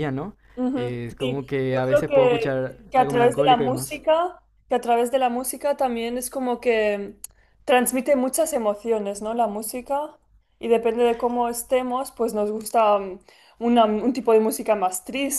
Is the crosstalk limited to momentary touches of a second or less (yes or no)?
no